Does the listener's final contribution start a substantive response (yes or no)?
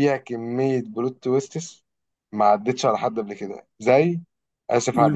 yes